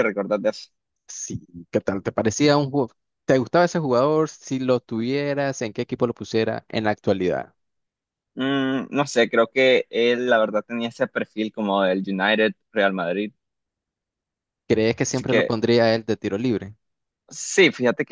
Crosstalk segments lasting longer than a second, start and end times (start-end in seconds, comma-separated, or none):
none